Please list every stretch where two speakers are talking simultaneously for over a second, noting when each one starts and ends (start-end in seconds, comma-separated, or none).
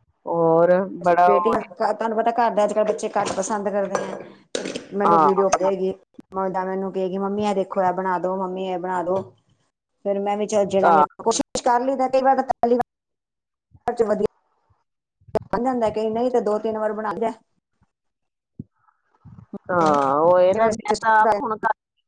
none